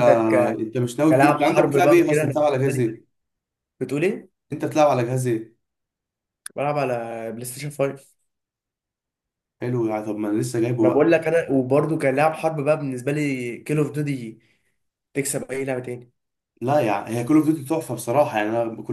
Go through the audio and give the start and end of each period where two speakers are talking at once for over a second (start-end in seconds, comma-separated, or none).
1.1-2.9